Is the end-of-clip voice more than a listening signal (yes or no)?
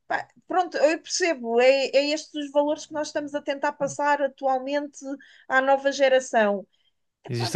yes